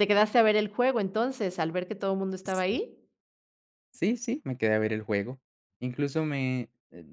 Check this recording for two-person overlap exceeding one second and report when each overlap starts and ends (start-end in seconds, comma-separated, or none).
none